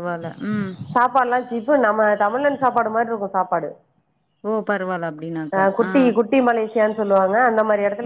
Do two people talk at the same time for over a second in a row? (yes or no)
no